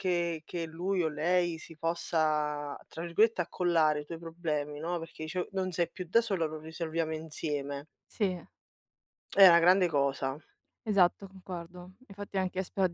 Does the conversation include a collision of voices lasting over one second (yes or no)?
no